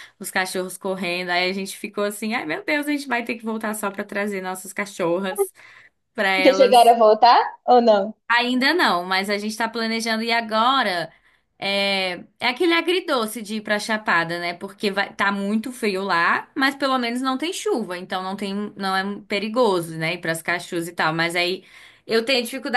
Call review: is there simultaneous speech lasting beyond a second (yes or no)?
no